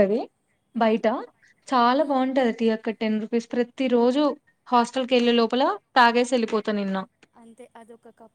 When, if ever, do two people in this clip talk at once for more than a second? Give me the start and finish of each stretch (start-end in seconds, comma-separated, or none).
none